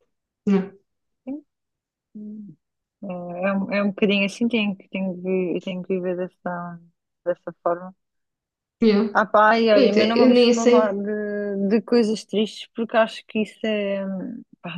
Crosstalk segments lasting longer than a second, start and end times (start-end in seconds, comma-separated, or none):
9.7-11.0